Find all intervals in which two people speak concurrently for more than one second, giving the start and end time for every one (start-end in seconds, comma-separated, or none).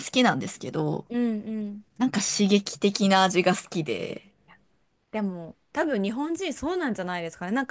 none